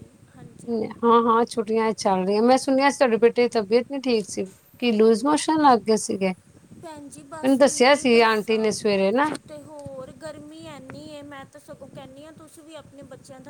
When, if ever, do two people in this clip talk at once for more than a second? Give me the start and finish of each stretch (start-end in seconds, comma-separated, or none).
6.8-8.7